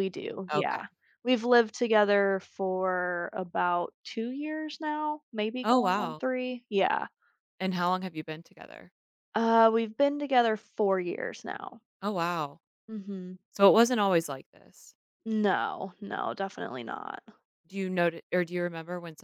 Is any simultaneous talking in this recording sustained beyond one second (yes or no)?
no